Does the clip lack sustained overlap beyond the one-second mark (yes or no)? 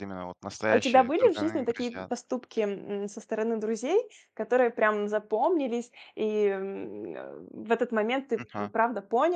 no